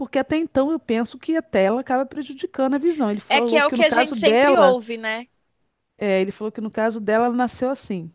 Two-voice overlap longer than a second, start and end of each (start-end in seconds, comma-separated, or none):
3.3-4.8